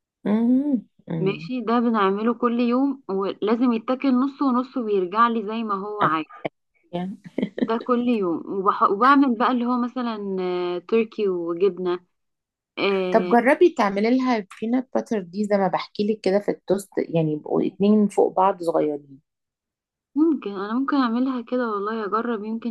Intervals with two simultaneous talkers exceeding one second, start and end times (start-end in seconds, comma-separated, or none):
none